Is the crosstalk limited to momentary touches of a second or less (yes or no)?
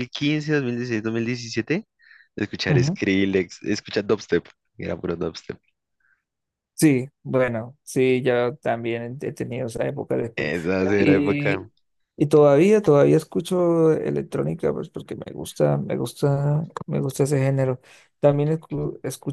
no